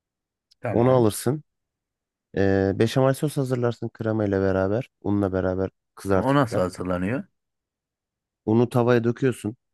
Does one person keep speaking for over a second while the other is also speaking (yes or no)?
no